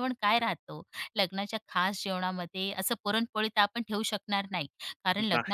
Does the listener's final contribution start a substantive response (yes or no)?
no